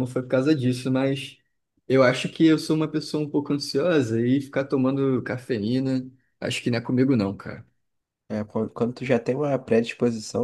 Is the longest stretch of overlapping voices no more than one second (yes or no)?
yes